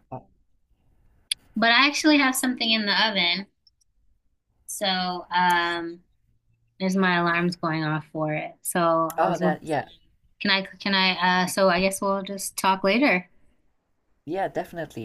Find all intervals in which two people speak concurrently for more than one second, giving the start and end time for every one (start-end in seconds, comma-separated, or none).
none